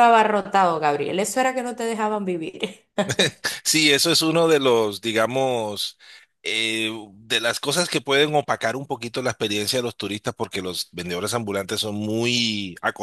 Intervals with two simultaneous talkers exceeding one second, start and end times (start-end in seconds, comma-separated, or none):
none